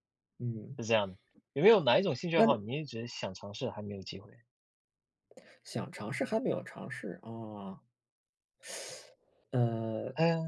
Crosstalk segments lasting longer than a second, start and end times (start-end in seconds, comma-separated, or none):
none